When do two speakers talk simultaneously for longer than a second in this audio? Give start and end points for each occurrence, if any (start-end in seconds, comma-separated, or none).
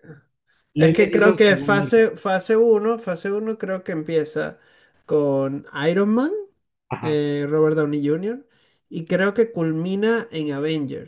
0.8-2.1